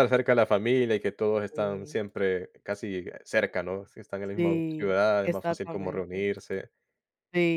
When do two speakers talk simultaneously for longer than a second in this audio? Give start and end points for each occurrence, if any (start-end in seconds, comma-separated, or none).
4.3-6.3